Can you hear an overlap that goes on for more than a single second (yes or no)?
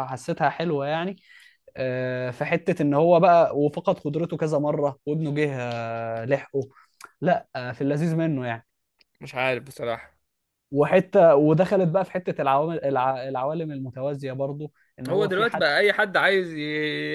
no